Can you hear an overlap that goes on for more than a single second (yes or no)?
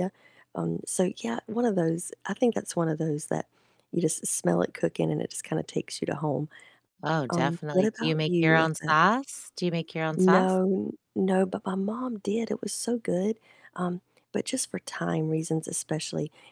yes